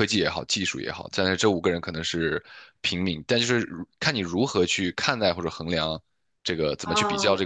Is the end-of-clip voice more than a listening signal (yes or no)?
yes